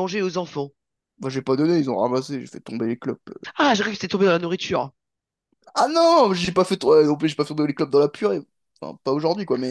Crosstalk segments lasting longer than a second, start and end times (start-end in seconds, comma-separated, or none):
none